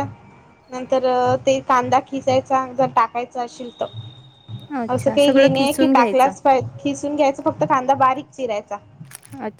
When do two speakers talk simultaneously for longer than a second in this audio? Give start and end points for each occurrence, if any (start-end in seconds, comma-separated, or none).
4.9-6.3